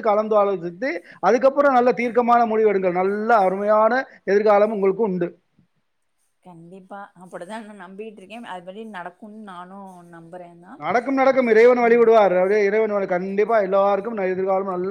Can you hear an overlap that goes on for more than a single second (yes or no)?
no